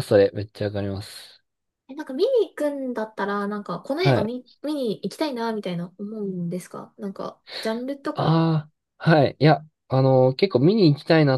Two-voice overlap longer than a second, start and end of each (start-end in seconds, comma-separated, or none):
none